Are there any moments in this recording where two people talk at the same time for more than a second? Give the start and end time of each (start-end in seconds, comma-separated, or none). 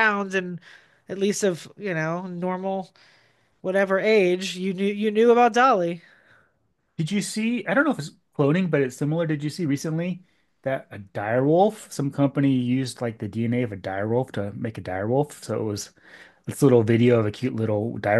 none